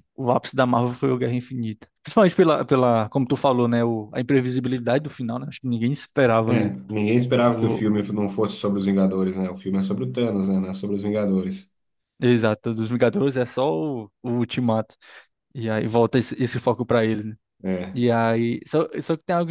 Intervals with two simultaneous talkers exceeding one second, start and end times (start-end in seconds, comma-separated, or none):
none